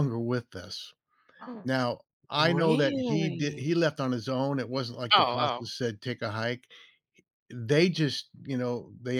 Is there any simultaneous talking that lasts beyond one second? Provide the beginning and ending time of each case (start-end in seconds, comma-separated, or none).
2.4-3.7